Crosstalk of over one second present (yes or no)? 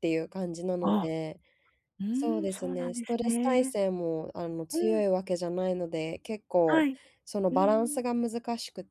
yes